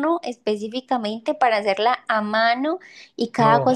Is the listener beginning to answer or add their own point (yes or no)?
no